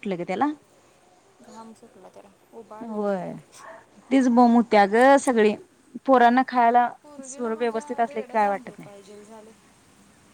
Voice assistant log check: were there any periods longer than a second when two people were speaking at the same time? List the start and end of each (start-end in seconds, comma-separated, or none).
7.2-8.9